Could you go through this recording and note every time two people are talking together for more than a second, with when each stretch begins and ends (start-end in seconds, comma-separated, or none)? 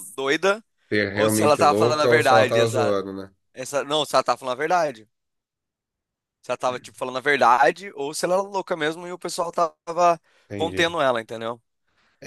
1.1-3.0